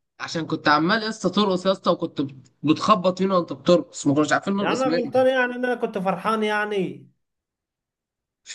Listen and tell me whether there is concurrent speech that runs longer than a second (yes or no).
no